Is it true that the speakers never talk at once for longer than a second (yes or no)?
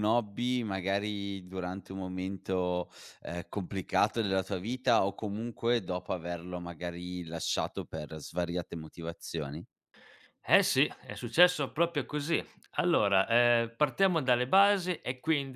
yes